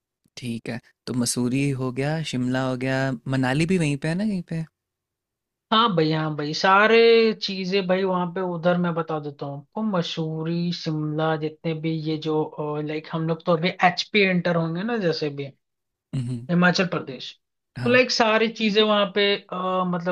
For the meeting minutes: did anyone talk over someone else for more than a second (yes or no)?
no